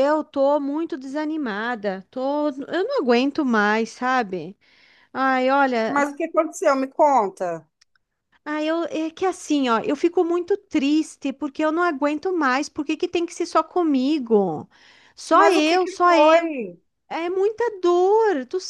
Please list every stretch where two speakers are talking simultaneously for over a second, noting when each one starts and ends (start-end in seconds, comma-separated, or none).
15.3-16.5